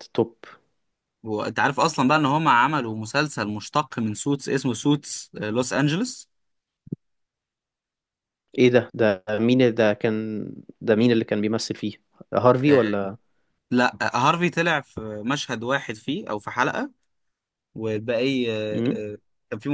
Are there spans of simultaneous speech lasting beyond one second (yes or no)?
no